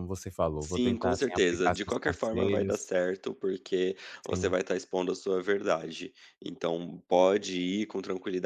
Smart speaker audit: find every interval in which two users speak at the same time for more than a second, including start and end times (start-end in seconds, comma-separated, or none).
0.6-2.8